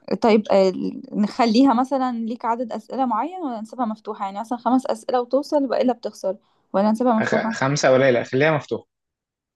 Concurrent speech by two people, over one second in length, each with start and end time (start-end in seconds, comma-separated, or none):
none